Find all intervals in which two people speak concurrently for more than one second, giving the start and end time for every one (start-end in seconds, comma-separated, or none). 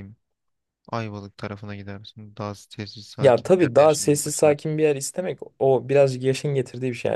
3.2-4.8